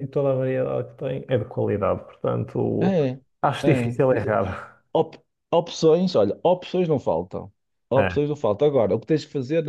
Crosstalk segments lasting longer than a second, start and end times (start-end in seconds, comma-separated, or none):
none